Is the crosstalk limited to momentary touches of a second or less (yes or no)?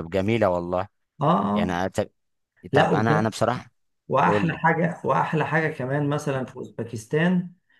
yes